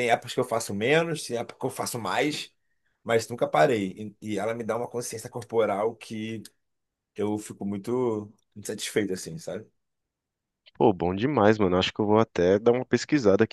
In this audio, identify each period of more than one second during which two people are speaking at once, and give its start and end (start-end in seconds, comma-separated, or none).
none